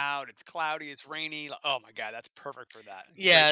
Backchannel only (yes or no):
no